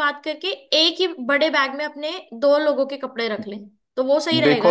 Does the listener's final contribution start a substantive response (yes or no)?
yes